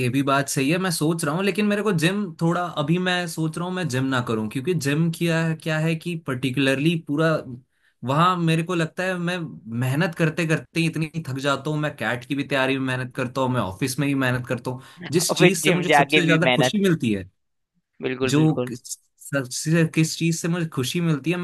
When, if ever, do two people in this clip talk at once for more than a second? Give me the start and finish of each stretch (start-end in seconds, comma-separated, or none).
15.3-16.8